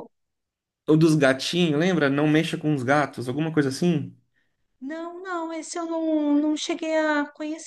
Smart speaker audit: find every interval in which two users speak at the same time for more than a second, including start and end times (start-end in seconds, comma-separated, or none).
none